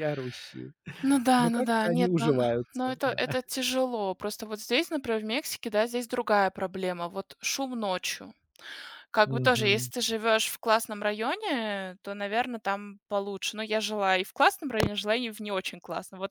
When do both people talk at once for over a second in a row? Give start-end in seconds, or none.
1.4-3.2